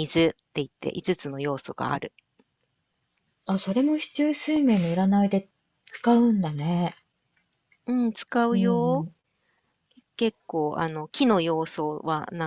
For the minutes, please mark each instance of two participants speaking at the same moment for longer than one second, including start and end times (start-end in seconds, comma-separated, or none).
none